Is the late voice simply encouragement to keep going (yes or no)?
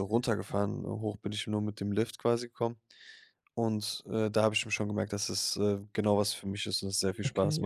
no